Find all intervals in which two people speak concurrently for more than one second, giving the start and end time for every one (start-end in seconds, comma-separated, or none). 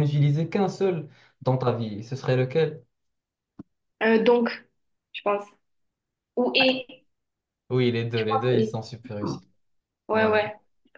none